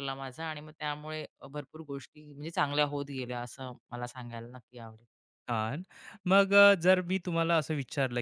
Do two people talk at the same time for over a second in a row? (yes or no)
no